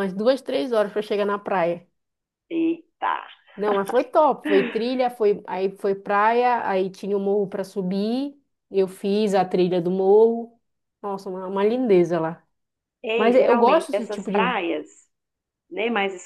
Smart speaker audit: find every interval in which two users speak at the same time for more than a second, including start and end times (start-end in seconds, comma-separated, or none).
13.2-14.4